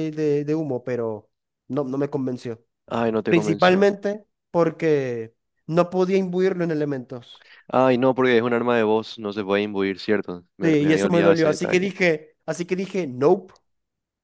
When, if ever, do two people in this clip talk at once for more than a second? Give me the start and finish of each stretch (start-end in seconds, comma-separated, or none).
10.6-11.9